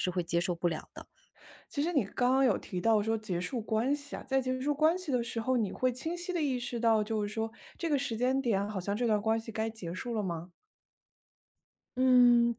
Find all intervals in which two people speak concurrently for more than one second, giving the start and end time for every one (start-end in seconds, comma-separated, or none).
none